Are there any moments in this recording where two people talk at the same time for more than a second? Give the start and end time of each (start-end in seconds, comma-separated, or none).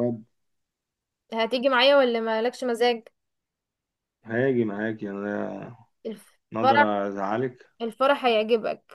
none